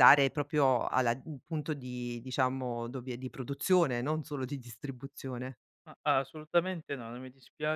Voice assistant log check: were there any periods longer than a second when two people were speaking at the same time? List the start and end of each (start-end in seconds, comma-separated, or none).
none